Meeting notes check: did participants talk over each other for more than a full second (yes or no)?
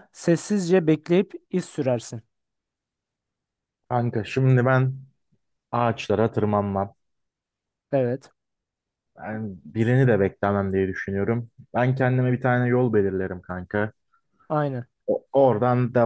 no